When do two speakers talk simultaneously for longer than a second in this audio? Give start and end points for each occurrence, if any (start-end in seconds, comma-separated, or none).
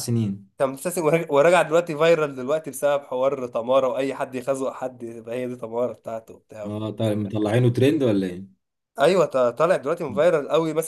none